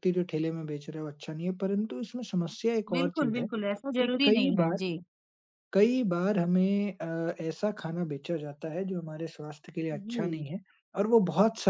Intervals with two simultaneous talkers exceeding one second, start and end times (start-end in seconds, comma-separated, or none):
2.9-4.8